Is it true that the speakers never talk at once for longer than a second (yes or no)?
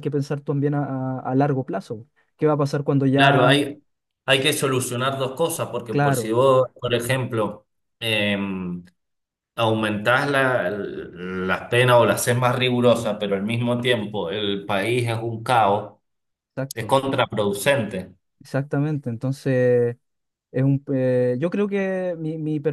yes